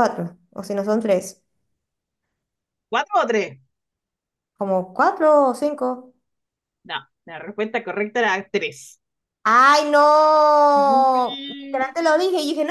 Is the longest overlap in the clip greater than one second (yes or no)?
yes